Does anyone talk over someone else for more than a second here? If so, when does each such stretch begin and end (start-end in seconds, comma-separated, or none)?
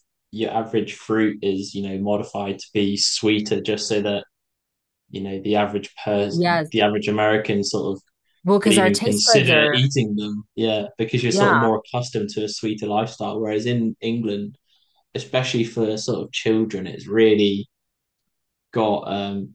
8.6-9.9